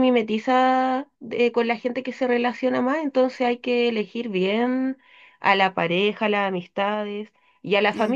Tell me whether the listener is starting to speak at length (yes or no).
no